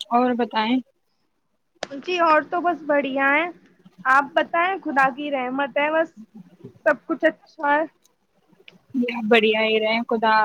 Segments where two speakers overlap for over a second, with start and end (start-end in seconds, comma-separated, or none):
none